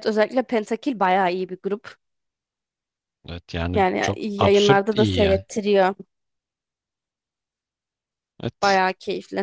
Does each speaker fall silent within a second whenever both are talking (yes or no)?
no